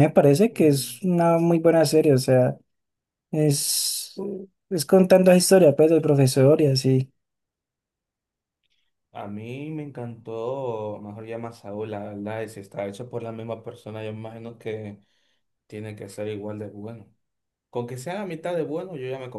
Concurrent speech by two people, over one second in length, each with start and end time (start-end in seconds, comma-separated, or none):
none